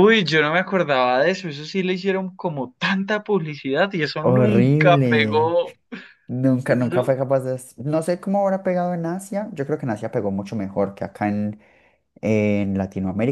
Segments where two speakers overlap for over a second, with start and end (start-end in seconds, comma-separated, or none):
4.2-5.5